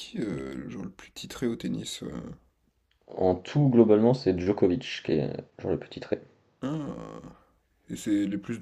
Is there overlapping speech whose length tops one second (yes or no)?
no